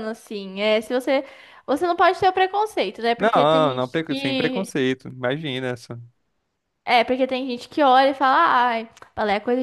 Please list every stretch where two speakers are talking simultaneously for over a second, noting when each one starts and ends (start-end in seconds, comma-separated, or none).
3.2-4.7